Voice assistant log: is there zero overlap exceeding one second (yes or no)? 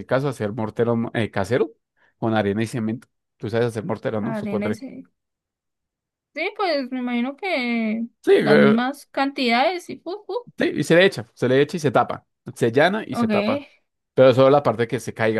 yes